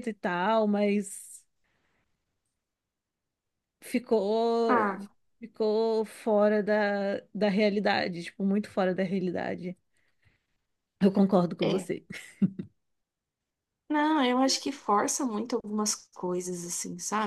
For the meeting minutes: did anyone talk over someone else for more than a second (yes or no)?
no